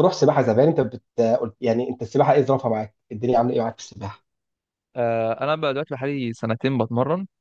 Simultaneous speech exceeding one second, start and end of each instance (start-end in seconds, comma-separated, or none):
none